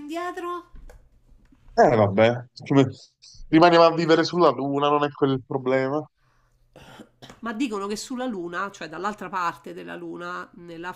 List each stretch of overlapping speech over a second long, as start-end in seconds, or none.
none